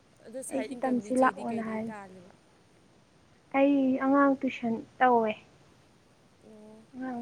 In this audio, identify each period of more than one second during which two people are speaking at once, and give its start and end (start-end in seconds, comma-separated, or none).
0.5-1.9